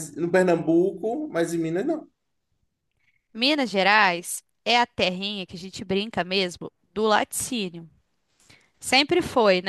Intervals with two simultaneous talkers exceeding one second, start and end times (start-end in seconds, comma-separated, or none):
none